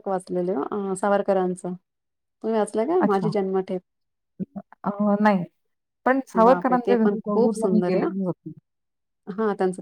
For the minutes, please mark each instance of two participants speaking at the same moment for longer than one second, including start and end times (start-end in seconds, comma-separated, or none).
6.5-8.1